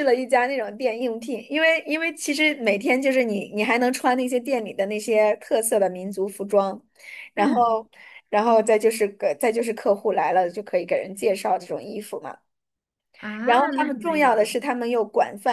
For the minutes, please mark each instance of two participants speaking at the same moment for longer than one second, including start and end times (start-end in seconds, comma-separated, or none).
13.4-14.7